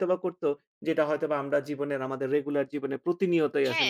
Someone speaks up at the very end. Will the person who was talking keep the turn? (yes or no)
no